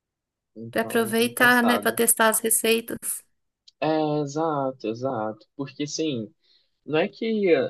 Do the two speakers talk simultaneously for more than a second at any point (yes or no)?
yes